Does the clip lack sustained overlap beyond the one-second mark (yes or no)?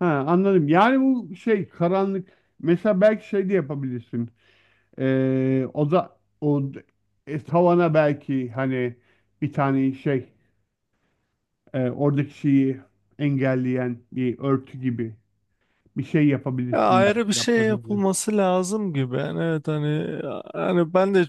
no